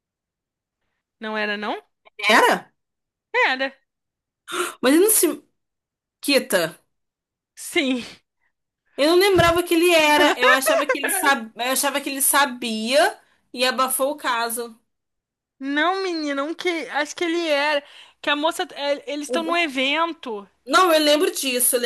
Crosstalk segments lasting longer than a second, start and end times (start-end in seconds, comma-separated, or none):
none